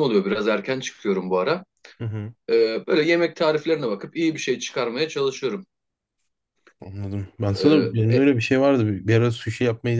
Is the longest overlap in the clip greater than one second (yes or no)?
no